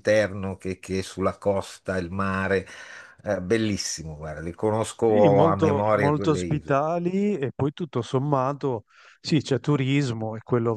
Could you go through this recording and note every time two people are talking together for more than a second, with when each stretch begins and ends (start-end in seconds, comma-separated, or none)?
5.0-6.8